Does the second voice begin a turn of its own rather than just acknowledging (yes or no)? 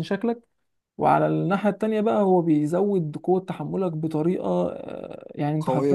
no